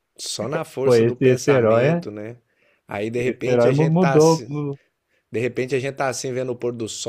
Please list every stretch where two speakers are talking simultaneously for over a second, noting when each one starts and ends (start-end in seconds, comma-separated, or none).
0.8-2.0, 3.1-4.5